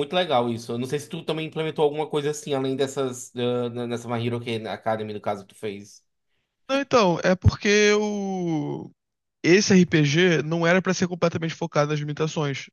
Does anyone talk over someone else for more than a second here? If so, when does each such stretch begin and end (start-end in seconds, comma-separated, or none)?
none